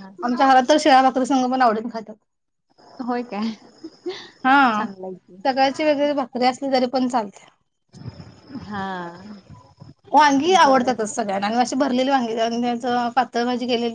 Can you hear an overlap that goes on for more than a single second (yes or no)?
no